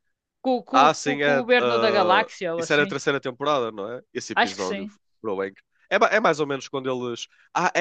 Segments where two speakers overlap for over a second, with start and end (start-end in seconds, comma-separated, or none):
0.7-3.0